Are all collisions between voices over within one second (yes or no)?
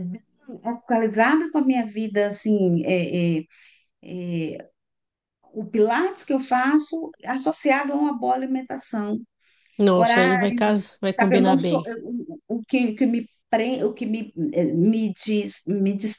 no